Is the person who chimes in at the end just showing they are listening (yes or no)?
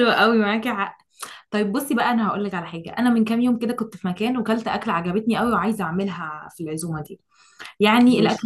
yes